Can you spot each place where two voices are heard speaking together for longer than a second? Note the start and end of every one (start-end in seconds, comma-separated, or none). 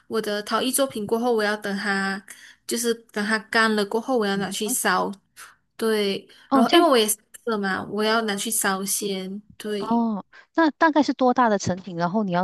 none